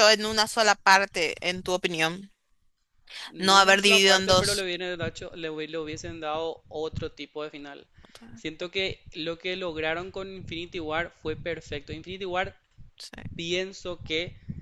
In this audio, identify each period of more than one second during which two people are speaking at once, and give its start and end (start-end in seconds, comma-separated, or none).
3.4-4.7